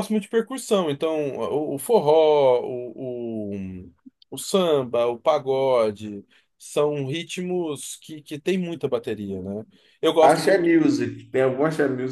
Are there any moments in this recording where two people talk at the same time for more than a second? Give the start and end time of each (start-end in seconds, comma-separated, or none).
none